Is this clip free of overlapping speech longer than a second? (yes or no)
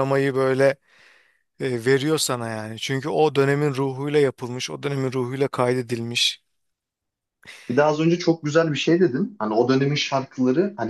yes